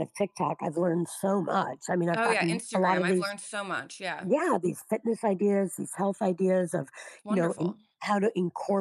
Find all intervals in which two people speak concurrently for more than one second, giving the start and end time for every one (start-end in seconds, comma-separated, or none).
2.1-3.4